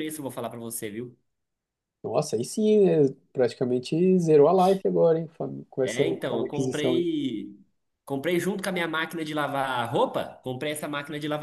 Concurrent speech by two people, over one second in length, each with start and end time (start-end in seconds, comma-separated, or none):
5.8-7.0